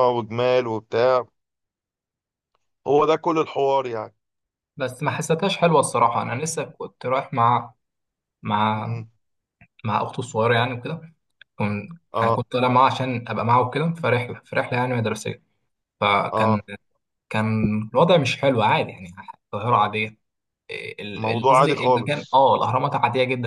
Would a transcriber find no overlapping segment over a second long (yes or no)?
no